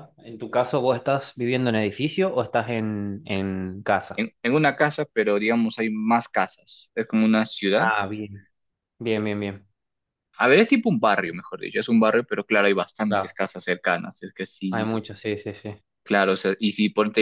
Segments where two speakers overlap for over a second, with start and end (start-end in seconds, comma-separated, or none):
none